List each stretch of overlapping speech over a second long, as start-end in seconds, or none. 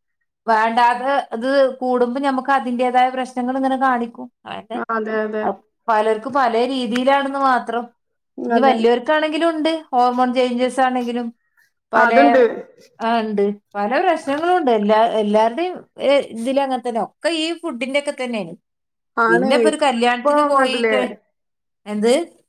19.3-21.0